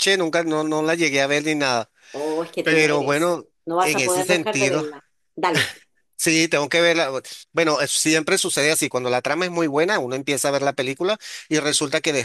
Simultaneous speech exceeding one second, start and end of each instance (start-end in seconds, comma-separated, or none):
2.6-4.8